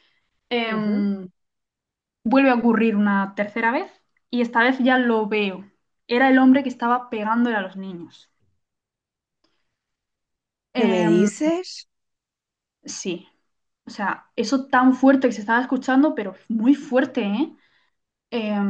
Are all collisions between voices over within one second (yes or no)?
yes